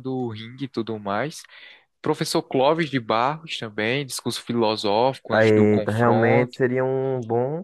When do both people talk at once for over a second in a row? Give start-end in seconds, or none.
5.3-6.6